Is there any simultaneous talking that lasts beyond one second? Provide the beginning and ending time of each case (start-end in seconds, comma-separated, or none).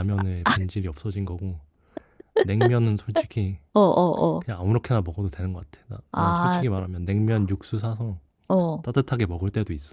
none